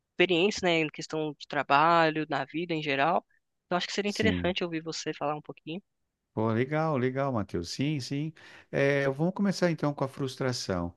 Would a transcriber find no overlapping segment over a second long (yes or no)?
yes